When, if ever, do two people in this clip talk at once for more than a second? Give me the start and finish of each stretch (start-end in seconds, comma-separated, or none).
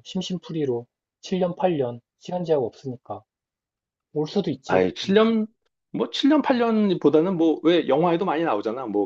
none